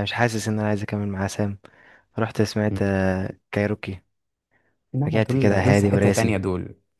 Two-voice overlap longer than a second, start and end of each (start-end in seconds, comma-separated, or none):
5.1-6.4